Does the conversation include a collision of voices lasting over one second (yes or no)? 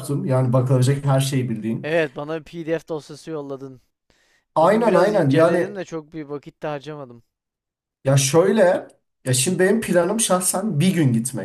yes